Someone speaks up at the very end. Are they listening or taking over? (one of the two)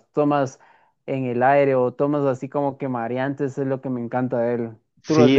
taking over